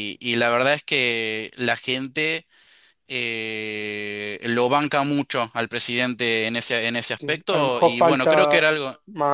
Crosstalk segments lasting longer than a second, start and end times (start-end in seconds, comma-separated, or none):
7.2-8.7